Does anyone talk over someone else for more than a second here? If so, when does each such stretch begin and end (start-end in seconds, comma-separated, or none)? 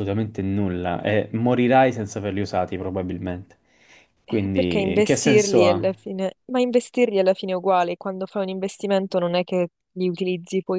4.3-5.9